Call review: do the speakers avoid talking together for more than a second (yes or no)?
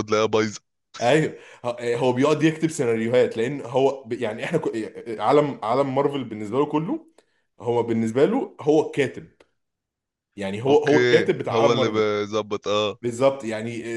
no